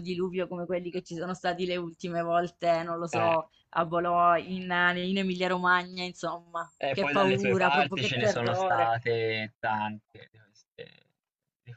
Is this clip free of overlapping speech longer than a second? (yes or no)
no